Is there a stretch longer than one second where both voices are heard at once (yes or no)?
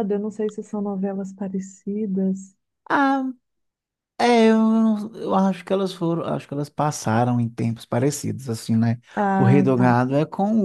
no